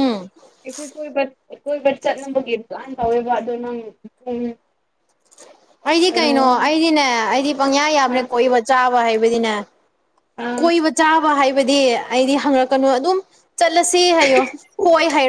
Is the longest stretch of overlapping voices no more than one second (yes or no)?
yes